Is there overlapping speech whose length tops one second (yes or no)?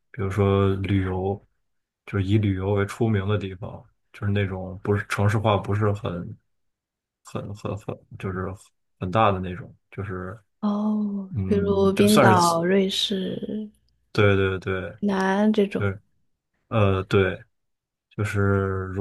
yes